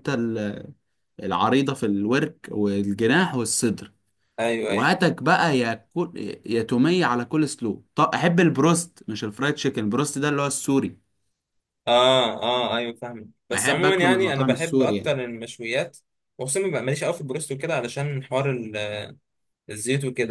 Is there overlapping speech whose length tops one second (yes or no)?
yes